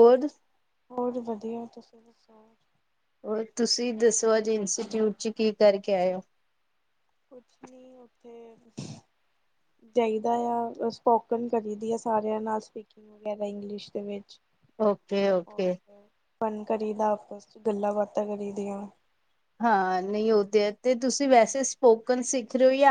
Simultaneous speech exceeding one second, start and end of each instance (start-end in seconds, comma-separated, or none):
none